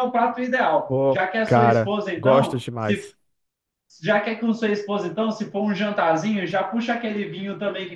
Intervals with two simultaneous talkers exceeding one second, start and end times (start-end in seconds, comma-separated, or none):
0.9-3.1